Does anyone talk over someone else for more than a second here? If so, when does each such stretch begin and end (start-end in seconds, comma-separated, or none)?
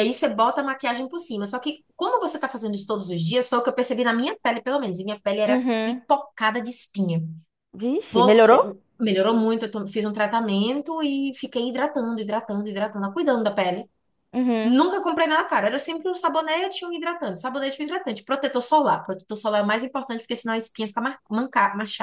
none